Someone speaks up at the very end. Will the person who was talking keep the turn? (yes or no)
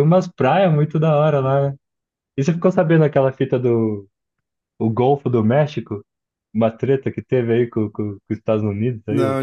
no